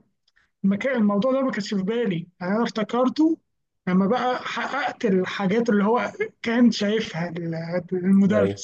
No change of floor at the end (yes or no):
no